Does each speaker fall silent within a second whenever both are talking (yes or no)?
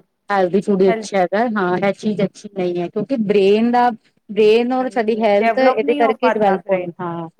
no